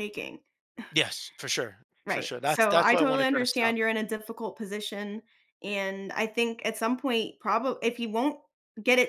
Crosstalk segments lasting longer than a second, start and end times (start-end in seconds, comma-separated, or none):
2.0-3.8